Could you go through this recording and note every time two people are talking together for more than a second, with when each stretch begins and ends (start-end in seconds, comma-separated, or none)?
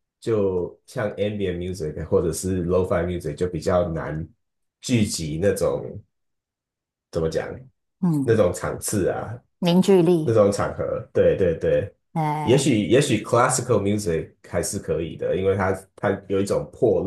none